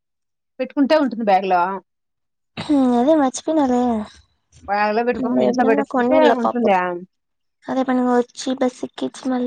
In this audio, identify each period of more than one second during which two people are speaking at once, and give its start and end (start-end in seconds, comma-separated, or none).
5.2-6.7